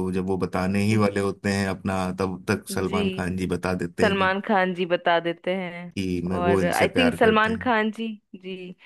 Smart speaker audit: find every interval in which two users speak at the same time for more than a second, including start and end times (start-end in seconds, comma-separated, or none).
6.3-7.8